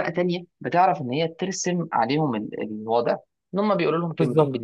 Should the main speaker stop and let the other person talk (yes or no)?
yes